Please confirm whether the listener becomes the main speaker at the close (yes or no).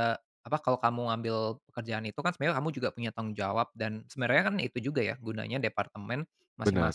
no